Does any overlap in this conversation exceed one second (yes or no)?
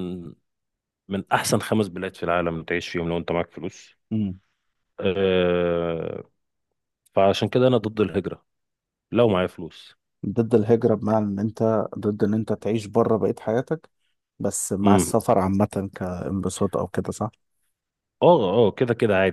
no